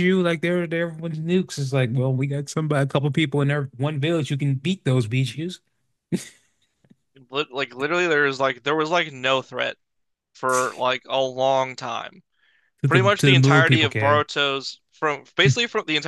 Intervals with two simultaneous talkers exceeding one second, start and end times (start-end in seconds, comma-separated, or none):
12.9-14.2